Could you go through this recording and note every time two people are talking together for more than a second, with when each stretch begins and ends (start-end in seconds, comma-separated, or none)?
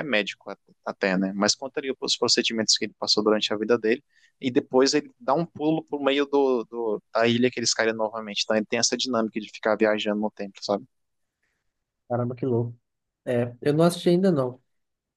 none